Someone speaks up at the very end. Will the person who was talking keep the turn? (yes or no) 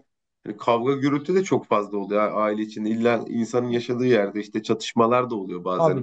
no